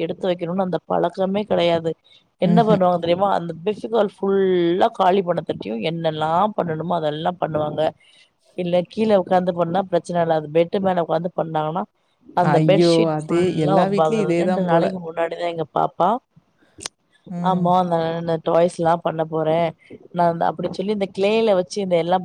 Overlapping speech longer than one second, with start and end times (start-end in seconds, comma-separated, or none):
12.6-14.9